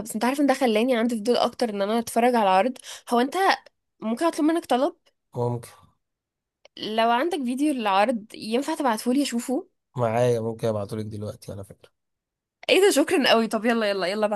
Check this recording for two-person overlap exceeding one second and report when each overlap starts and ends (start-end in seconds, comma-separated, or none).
none